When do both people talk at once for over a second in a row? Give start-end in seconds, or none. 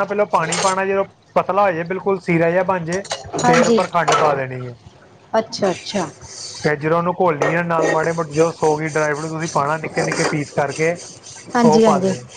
none